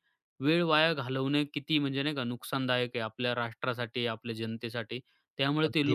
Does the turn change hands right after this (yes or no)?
no